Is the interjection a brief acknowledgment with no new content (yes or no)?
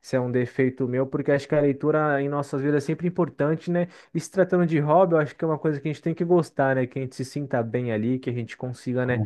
yes